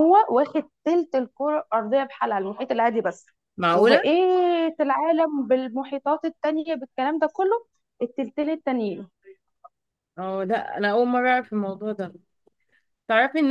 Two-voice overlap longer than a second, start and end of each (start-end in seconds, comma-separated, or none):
none